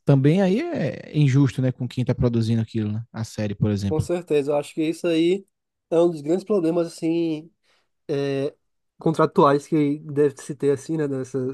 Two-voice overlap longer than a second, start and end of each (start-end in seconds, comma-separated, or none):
none